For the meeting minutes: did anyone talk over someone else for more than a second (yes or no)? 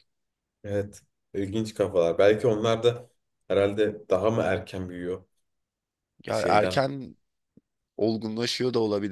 no